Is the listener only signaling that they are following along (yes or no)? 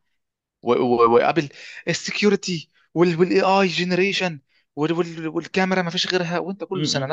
yes